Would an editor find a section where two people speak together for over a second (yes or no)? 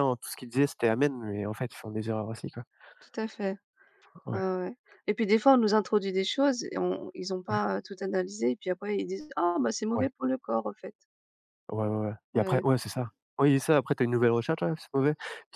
no